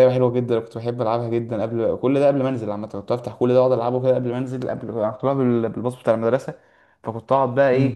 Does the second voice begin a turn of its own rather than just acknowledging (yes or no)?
no